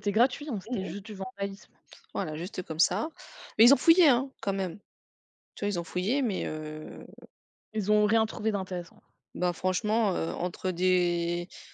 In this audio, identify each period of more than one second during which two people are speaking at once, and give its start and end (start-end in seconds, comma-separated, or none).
none